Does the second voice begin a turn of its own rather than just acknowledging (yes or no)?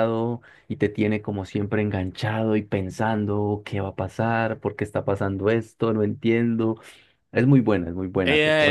yes